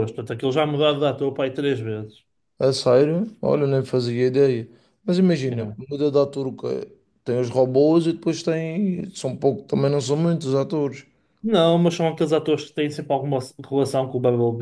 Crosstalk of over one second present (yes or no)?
no